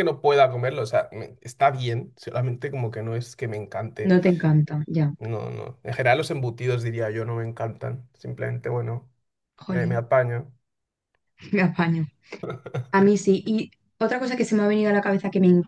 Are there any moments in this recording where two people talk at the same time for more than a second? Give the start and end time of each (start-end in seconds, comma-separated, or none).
none